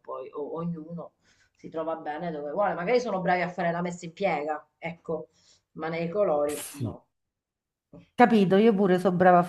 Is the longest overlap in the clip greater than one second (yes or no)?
no